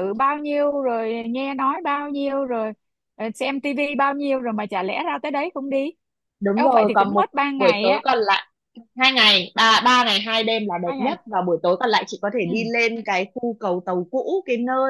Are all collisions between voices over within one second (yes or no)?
no